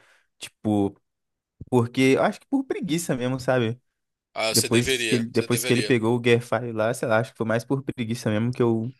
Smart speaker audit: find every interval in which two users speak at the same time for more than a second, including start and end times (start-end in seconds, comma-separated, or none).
4.5-5.9